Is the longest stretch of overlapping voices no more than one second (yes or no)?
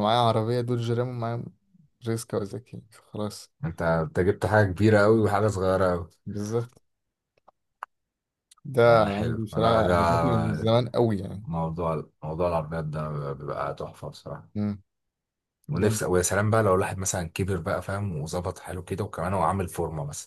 no